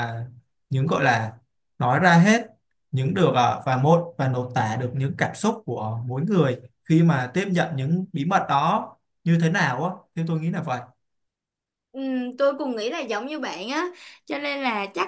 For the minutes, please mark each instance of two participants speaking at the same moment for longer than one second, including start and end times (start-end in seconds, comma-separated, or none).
none